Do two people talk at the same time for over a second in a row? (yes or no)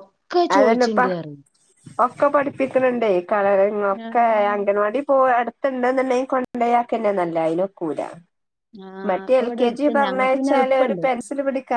yes